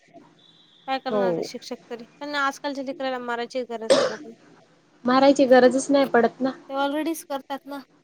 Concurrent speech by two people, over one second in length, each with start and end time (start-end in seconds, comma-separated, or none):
none